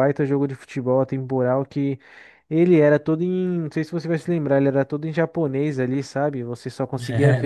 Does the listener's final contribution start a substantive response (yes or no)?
no